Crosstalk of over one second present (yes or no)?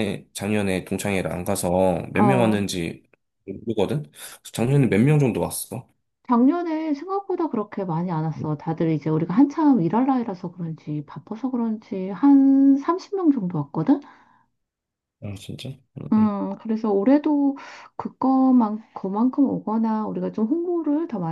no